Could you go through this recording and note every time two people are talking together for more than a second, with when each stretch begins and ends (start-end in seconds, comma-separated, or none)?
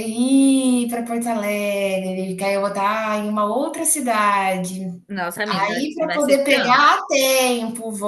5.5-6.8